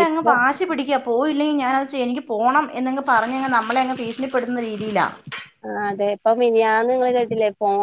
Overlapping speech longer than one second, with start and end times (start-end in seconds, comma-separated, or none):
none